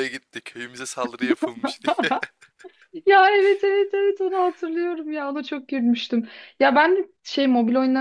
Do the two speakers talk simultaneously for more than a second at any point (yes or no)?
no